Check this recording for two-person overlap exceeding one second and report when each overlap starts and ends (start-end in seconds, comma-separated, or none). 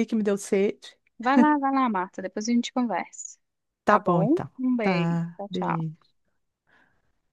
3.9-6.0